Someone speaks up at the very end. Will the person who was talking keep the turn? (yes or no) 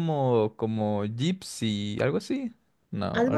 no